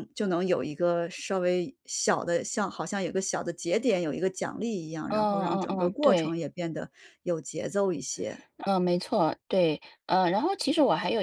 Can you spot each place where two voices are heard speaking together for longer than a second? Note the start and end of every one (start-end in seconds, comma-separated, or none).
5.1-6.3